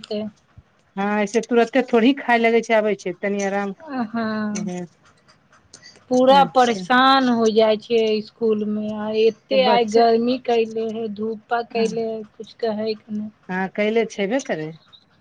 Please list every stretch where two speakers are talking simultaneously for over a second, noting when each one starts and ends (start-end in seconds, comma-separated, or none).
none